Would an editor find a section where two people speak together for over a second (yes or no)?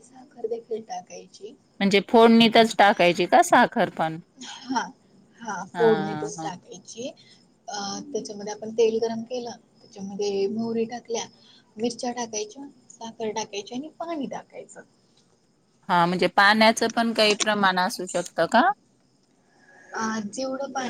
no